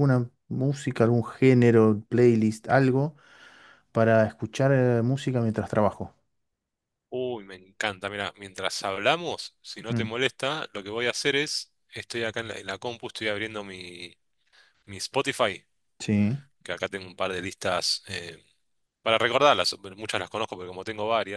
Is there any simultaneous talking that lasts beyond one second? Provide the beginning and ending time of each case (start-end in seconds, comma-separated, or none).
none